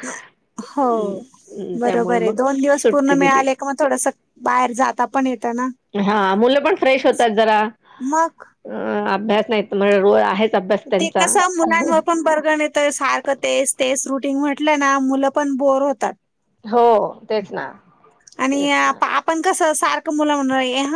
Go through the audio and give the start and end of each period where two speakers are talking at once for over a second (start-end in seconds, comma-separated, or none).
1.8-3.4